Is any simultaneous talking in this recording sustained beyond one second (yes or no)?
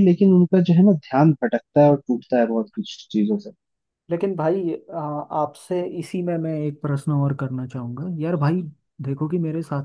no